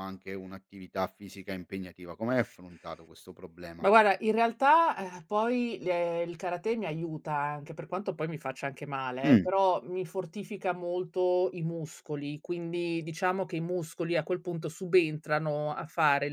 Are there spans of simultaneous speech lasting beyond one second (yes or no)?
no